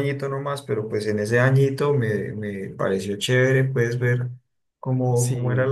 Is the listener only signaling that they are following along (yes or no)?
yes